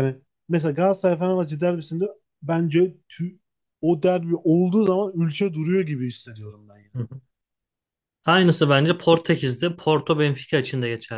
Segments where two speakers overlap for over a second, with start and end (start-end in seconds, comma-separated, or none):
none